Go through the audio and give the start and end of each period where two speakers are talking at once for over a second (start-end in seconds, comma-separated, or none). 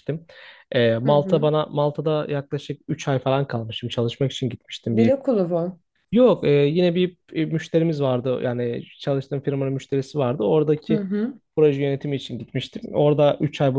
none